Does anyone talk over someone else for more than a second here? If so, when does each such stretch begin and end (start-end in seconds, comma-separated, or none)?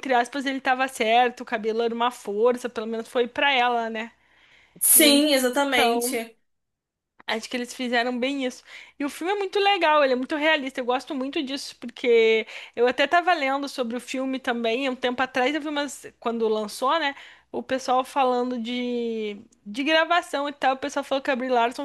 none